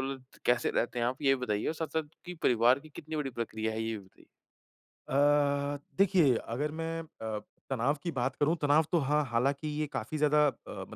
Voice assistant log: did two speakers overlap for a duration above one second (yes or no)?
no